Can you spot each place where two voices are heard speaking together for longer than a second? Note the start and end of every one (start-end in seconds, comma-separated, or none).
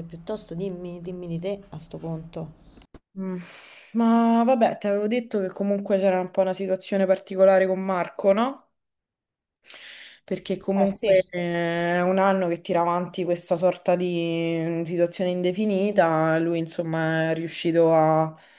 none